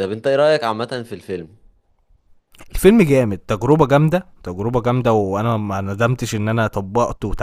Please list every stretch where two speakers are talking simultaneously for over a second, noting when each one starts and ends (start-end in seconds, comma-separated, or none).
none